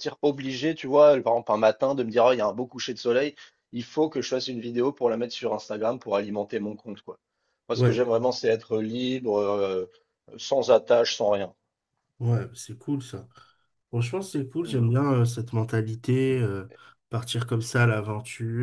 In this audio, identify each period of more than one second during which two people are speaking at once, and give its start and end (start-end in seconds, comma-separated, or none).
none